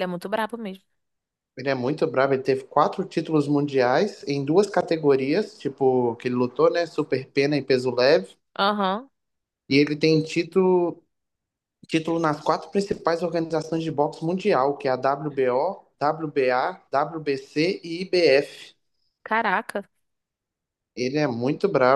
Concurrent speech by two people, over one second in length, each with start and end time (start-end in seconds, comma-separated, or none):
none